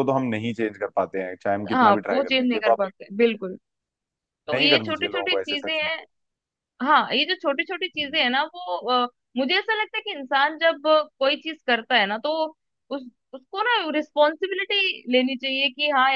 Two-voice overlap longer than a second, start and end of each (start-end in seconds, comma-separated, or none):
1.7-3.3, 4.5-5.9